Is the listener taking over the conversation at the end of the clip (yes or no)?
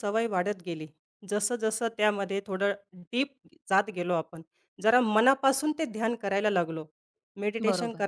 no